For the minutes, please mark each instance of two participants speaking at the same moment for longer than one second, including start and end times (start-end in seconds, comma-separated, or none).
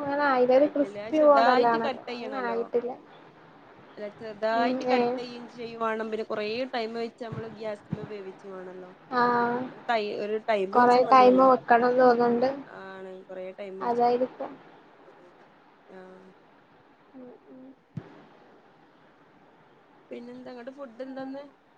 0.6-2.6